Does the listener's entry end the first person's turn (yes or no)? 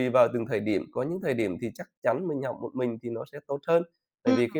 no